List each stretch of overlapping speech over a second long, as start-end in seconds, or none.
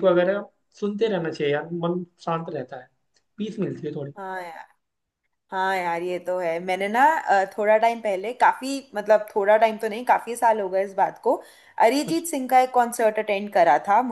none